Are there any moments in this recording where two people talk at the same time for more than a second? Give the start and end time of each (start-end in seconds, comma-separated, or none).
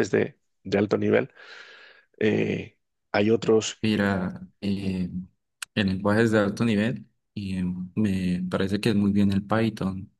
none